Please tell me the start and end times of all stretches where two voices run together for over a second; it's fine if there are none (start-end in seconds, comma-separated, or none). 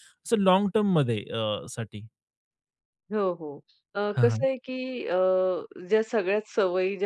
none